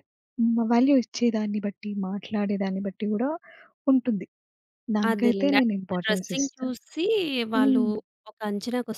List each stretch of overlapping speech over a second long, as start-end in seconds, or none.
5.1-6.7